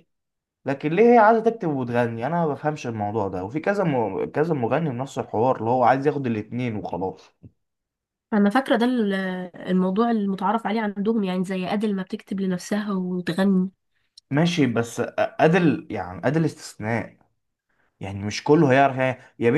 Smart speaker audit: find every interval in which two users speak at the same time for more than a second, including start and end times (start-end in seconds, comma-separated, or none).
none